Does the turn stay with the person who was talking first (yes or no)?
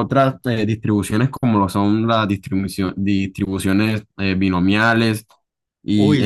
yes